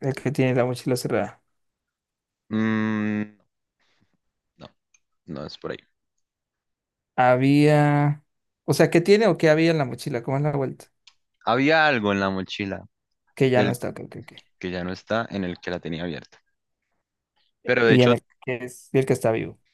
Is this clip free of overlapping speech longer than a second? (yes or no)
yes